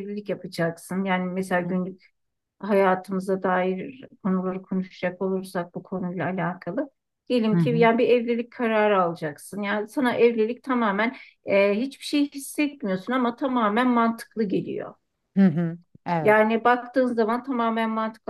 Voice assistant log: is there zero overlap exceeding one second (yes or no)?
yes